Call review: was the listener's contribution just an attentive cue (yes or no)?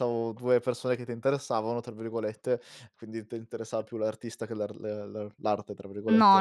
no